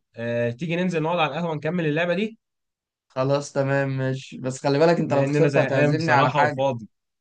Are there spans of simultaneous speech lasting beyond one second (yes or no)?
yes